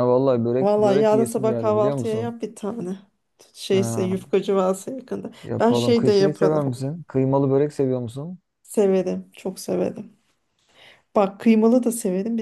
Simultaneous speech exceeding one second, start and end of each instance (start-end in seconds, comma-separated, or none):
0.6-2.3, 5.4-6.6